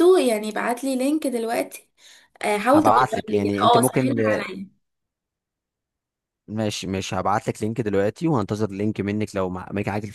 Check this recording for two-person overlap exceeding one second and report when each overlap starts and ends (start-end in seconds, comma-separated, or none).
2.7-4.2